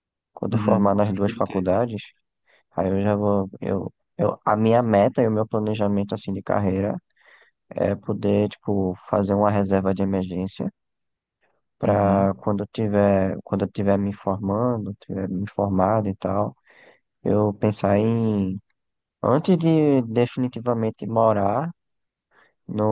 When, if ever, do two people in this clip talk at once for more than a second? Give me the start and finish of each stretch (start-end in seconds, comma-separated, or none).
0.5-1.7